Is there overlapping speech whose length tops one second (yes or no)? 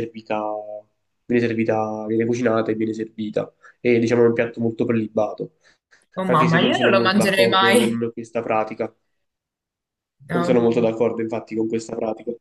yes